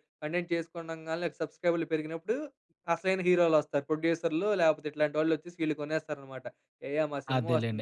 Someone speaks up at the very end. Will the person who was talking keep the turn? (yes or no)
no